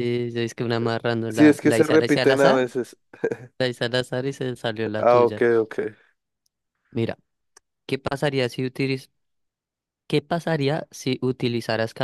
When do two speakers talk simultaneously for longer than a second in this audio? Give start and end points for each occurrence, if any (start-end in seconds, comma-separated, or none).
1.3-2.6